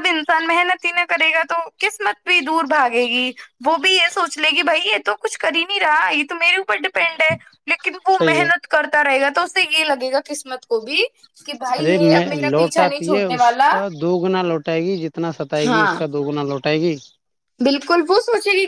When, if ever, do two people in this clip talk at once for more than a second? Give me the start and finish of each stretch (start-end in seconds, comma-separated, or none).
11.8-13.7